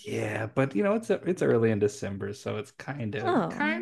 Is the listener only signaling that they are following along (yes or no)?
no